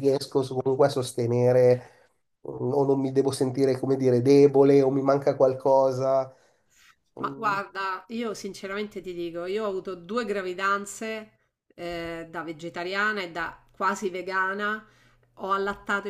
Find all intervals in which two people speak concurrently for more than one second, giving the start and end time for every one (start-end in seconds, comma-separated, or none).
none